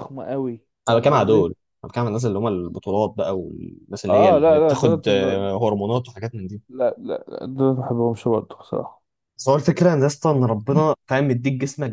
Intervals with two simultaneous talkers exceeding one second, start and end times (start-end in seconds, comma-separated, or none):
4.1-5.5